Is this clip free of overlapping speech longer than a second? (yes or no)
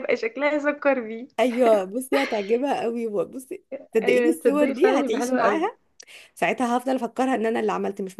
no